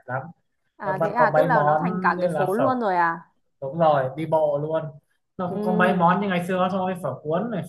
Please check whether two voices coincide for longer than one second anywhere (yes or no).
yes